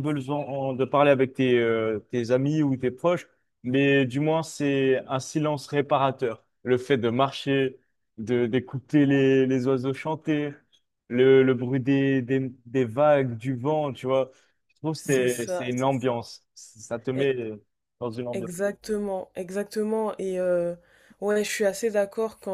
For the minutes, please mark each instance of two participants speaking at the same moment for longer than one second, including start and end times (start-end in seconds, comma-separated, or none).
15.0-16.2